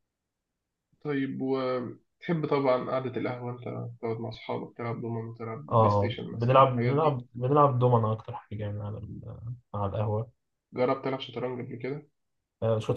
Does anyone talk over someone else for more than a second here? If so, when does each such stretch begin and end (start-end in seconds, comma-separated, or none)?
5.7-7.2